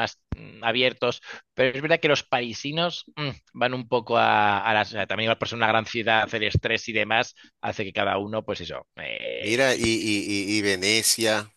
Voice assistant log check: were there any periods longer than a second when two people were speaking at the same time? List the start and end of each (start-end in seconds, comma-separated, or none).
none